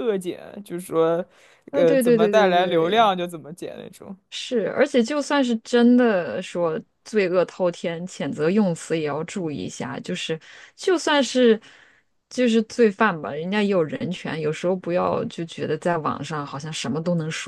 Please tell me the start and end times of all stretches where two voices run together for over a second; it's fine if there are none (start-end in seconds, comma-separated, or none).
1.7-3.1